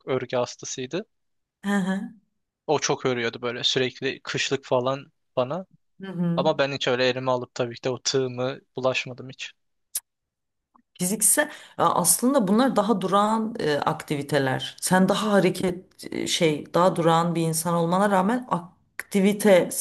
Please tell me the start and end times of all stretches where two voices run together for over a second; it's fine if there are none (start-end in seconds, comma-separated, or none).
none